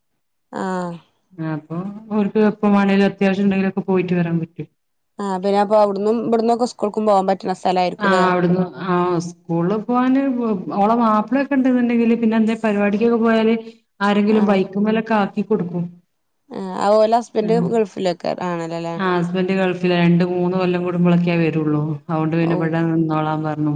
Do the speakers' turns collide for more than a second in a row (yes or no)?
no